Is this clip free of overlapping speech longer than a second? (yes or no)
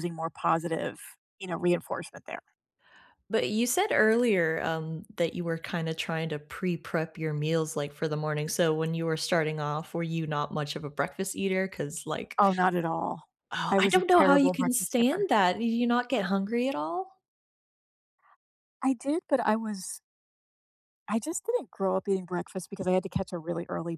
no